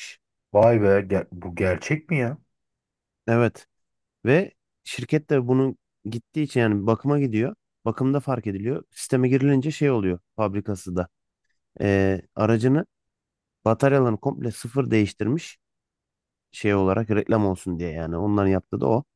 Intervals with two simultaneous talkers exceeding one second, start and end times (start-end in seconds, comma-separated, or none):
none